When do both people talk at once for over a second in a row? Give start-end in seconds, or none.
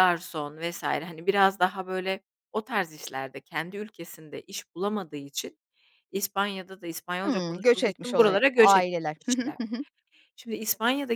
7.2-9.5